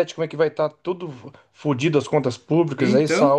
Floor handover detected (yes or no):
no